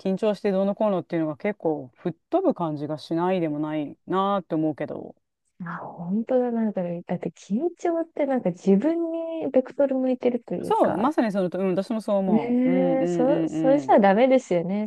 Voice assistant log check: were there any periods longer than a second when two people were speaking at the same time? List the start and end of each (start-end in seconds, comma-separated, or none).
12.3-14.0